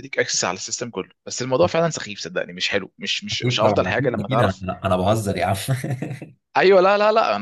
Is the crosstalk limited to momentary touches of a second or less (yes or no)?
no